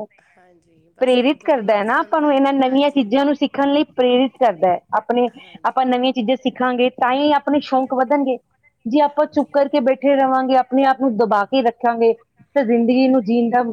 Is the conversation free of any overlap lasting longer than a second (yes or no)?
no